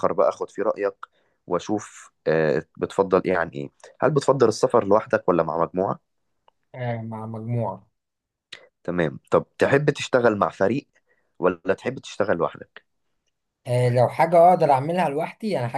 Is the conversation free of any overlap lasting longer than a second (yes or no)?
yes